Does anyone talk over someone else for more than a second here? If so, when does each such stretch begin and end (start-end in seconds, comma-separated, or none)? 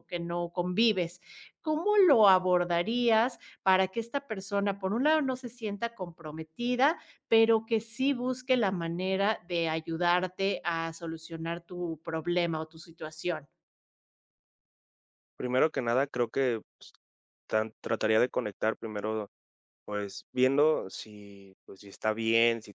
none